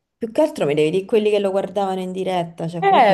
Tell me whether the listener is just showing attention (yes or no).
no